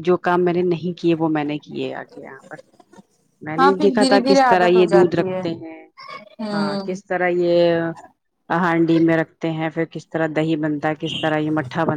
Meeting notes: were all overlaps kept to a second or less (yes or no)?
no